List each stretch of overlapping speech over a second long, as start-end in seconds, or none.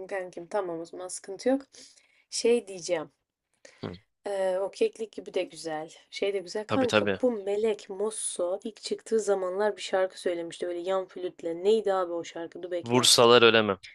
none